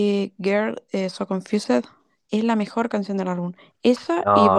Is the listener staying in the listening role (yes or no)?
no